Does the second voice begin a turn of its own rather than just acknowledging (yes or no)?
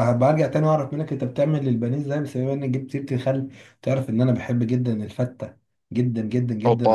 no